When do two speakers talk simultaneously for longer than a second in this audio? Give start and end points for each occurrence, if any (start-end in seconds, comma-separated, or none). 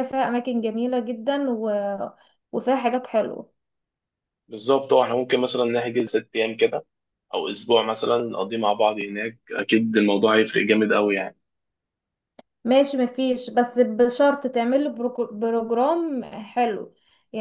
none